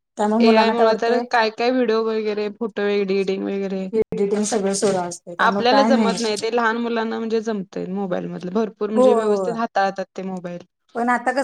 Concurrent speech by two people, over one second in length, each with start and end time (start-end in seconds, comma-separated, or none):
none